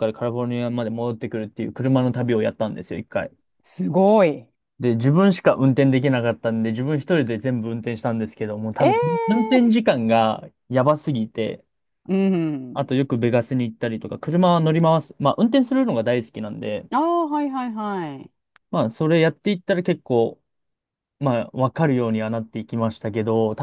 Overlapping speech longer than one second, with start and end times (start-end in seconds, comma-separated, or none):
none